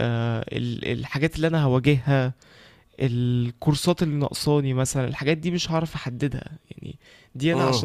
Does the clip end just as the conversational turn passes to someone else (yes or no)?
no